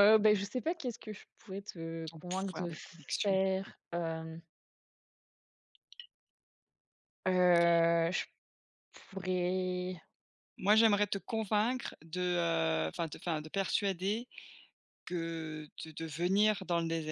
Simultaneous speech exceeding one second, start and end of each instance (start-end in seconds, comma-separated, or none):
2.0-3.4